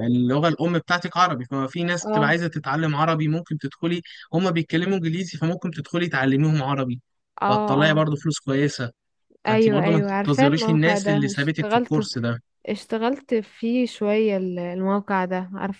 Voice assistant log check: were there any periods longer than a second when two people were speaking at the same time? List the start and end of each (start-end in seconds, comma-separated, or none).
9.5-12.1